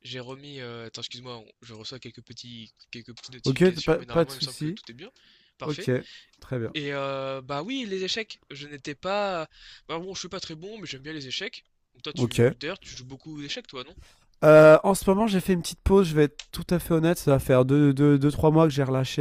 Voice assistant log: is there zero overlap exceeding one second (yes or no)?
no